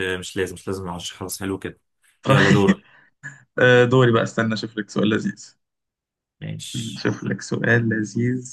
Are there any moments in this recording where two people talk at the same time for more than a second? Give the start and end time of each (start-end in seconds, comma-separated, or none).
none